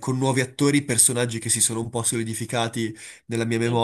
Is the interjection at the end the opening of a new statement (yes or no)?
no